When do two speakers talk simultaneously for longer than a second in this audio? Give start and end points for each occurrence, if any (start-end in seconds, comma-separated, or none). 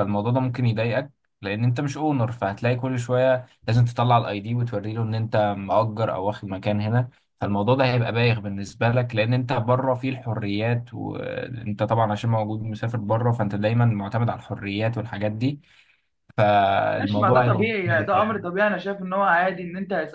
17.0-18.4